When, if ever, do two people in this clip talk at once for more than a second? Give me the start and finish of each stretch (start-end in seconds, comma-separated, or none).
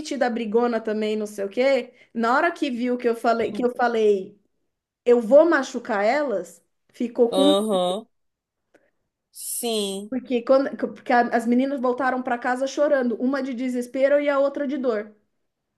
none